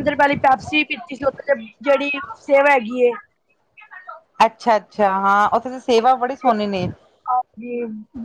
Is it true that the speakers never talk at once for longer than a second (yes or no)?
yes